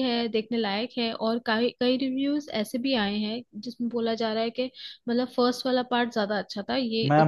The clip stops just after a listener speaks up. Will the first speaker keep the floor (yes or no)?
no